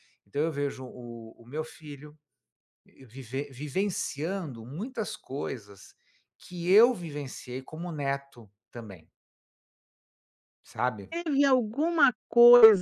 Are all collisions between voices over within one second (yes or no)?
yes